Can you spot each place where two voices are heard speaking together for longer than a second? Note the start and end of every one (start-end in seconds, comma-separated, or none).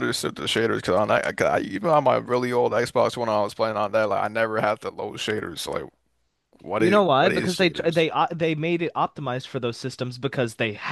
6.8-8.1